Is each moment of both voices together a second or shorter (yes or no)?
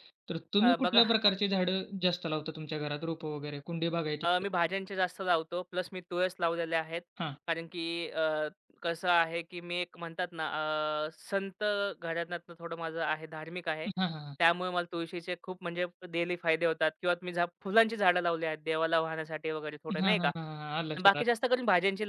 no